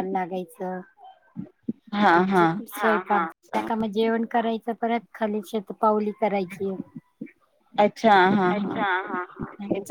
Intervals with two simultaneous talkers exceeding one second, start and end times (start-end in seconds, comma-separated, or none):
none